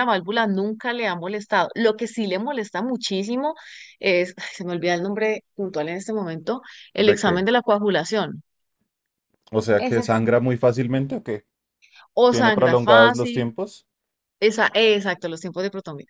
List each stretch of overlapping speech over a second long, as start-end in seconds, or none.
12.3-13.5